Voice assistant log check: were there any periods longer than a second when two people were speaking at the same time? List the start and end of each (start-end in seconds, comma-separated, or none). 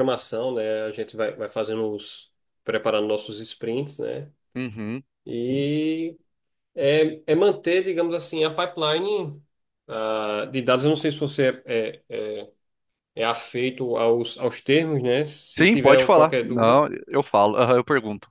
15.6-16.8